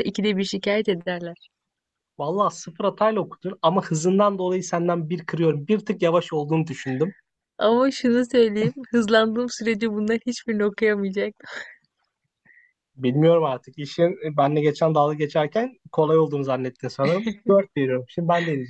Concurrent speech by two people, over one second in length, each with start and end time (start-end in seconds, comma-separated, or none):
none